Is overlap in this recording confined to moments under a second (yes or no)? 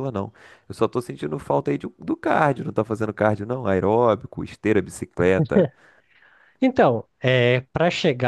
yes